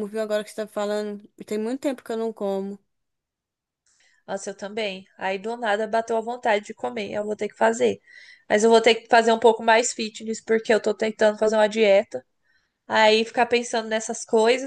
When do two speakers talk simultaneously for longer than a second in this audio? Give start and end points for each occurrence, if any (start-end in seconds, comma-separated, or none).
none